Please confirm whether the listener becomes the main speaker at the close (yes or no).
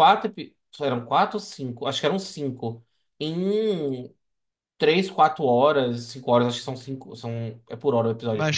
yes